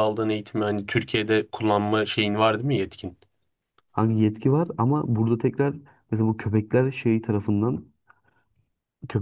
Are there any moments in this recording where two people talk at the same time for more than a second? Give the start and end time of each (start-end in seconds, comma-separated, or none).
none